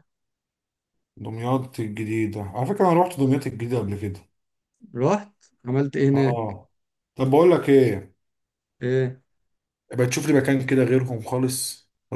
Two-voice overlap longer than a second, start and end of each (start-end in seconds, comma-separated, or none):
none